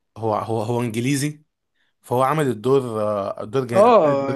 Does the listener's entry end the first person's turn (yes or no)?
yes